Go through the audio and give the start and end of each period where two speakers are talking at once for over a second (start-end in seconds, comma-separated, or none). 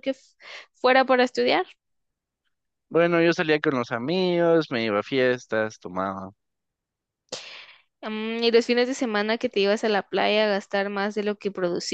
none